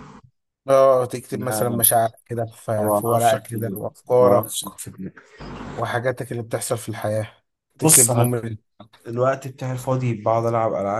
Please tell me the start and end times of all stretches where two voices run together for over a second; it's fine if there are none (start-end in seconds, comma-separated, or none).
2.8-4.5